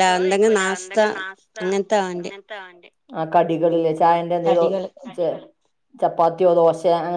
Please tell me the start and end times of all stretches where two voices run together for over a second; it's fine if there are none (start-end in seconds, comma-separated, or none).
none